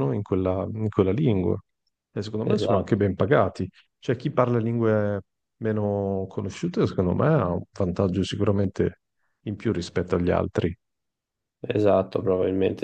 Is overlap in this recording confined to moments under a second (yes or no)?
yes